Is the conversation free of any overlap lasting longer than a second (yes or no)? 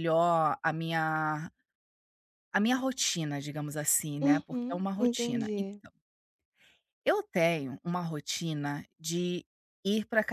no